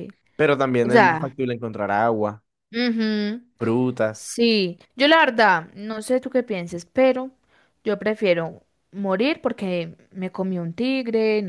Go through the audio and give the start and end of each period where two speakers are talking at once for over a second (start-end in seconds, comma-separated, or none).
none